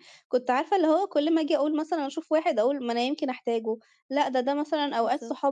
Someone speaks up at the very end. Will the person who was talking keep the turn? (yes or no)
yes